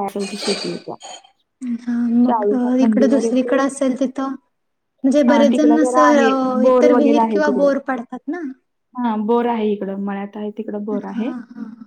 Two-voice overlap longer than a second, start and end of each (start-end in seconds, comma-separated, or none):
5.3-7.7